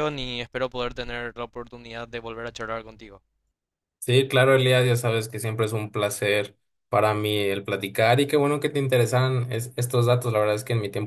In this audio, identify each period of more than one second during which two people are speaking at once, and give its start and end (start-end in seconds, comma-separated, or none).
none